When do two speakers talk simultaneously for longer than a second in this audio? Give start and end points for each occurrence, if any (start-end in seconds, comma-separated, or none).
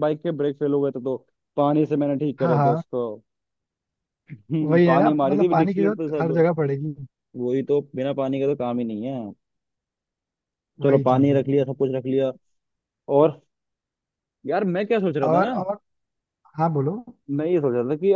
4.6-6.5